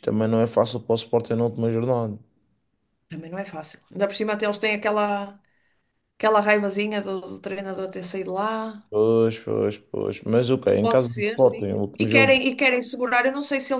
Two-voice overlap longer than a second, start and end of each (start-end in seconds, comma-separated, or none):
10.8-12.4